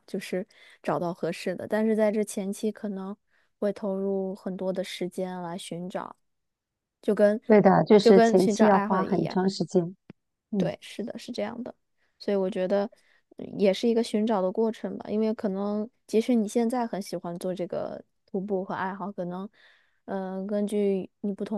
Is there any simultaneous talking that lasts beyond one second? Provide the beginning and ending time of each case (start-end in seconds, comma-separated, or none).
8.0-9.4